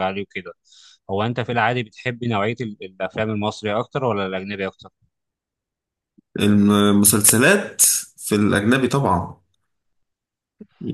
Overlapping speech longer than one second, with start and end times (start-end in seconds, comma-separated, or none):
none